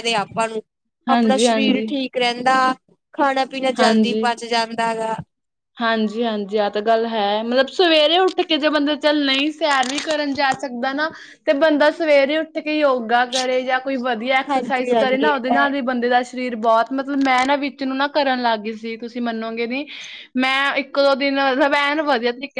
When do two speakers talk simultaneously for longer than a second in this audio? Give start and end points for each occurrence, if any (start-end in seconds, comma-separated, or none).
14.5-15.7